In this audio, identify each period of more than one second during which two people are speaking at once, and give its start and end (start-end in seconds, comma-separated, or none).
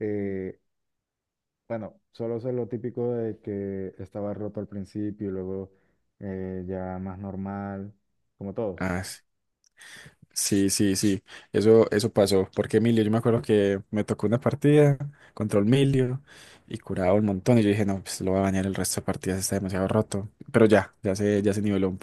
none